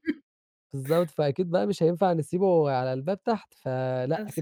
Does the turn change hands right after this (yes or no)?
no